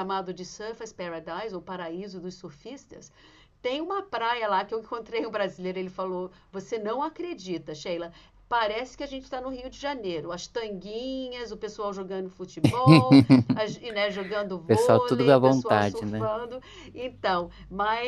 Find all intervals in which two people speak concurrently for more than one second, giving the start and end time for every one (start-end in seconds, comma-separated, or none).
14.7-16.3